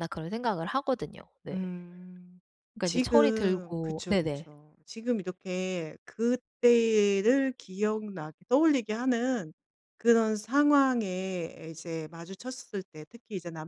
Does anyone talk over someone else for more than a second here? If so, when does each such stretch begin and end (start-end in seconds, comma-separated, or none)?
2.8-4.5